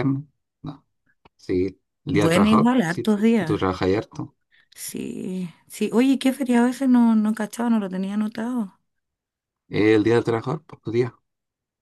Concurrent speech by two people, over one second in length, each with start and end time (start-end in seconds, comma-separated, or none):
2.1-3.6